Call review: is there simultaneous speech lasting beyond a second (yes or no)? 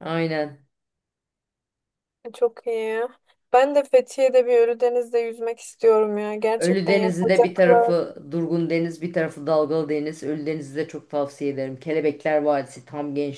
yes